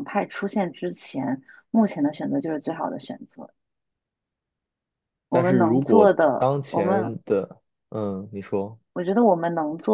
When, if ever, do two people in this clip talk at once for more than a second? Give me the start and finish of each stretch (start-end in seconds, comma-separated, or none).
5.3-7.2